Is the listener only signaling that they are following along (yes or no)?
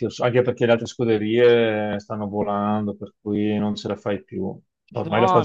yes